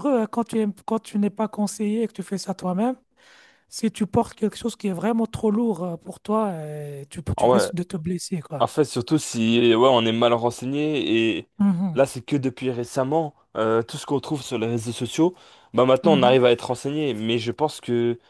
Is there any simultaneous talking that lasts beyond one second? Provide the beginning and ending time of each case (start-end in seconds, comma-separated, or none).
none